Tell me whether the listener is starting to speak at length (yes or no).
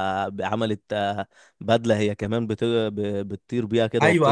yes